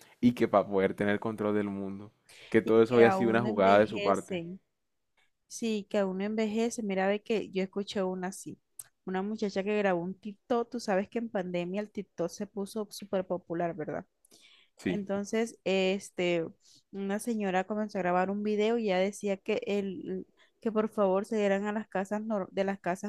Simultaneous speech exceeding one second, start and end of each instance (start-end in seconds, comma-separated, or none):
2.6-4.4